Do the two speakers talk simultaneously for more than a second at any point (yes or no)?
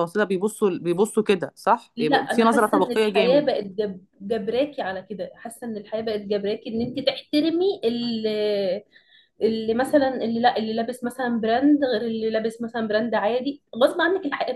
yes